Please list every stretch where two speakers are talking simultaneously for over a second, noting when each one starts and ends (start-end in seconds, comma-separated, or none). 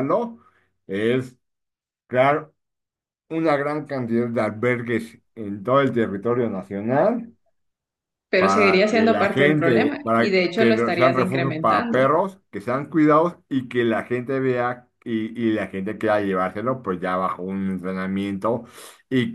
8.4-12.1